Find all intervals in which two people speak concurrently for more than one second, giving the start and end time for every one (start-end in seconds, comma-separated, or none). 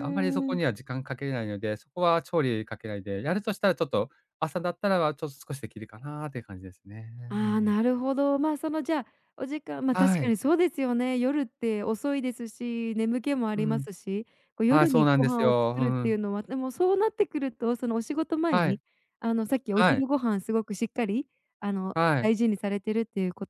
14.7-16.2